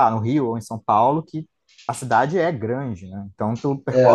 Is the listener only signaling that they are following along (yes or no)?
no